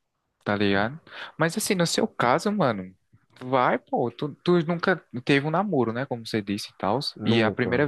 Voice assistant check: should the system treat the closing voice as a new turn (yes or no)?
no